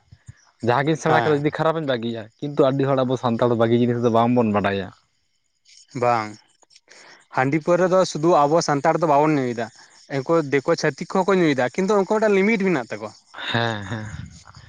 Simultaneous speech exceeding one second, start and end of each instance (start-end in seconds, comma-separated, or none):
none